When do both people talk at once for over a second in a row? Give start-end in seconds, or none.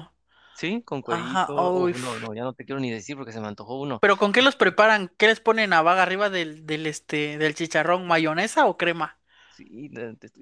1.1-2.3